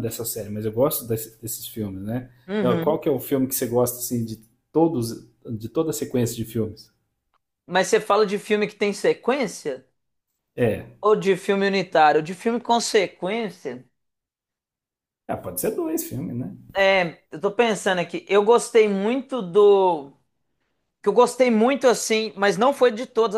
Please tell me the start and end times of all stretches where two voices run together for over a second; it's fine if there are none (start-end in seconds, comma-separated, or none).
none